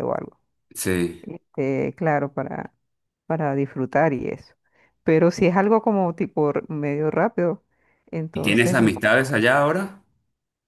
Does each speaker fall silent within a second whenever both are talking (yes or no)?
yes